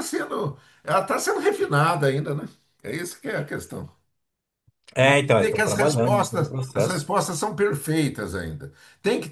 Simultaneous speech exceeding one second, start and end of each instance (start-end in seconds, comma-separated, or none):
5.0-7.1